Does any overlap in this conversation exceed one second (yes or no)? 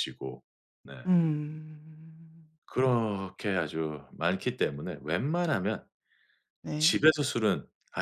no